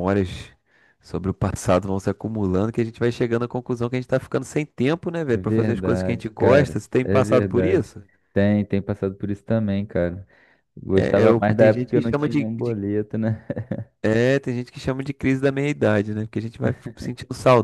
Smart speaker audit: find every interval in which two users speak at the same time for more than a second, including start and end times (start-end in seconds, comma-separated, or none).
5.2-8.0, 10.9-12.8